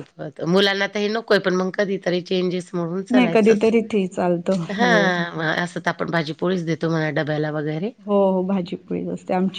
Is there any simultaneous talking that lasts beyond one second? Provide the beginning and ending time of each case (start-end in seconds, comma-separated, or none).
none